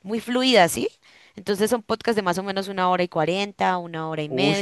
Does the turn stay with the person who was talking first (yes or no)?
no